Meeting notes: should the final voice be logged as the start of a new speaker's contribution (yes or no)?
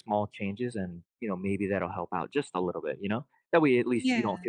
no